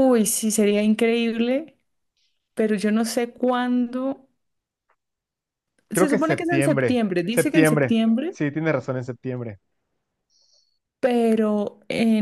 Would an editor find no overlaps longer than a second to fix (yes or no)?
no